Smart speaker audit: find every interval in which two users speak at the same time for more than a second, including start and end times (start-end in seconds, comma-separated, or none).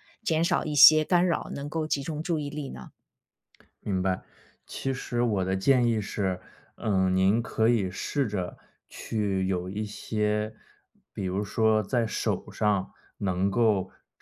none